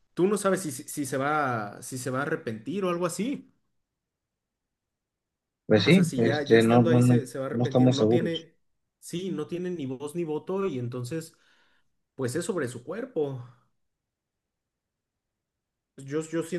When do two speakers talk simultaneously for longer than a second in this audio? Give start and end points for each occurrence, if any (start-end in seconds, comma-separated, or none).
5.8-8.5